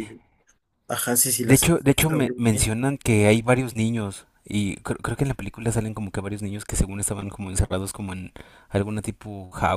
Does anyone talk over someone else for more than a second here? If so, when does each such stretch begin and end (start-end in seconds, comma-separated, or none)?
1.4-2.7